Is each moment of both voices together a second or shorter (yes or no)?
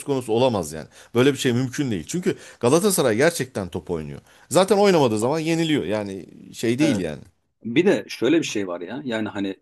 yes